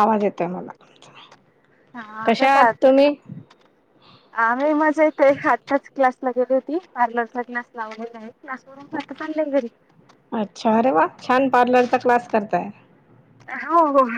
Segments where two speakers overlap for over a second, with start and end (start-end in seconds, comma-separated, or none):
none